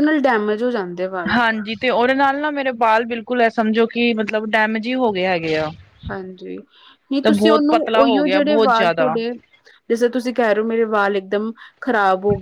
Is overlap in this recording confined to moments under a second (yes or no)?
no